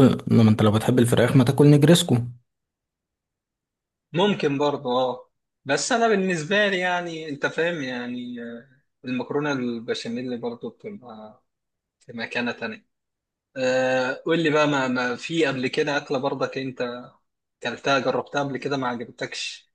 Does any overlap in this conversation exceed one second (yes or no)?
no